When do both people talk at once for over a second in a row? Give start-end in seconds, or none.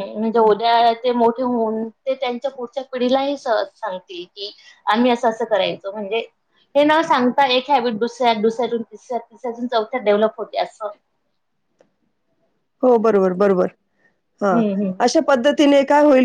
none